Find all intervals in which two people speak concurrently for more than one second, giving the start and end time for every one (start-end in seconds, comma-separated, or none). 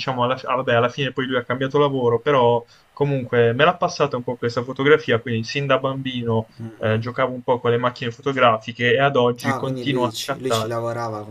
9.4-10.7